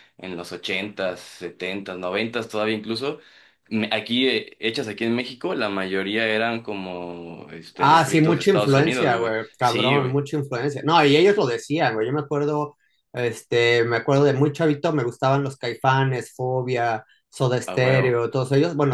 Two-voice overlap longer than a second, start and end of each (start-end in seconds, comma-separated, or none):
7.8-10.2